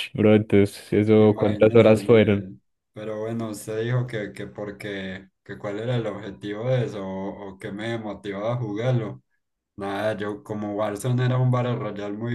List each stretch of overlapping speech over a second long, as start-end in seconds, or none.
1.2-2.5